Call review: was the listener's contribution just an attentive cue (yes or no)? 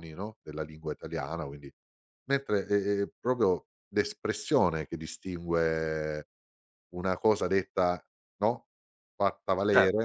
yes